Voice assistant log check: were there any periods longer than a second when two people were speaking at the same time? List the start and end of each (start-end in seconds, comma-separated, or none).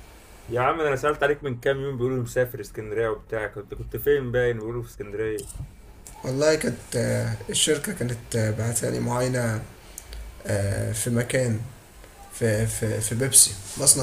none